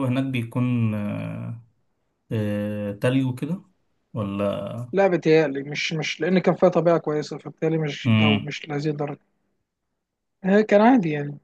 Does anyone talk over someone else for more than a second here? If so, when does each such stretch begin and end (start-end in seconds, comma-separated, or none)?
none